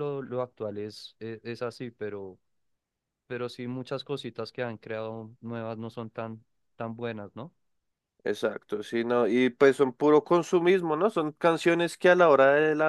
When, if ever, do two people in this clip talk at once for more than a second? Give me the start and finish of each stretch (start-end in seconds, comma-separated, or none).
none